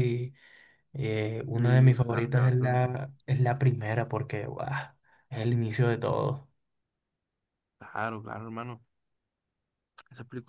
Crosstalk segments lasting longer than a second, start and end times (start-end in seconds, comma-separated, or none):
1.5-2.9